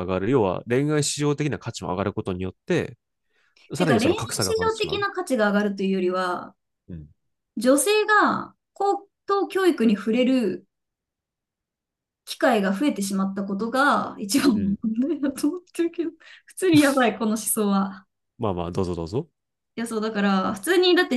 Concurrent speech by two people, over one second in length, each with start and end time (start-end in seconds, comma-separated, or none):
3.8-5.1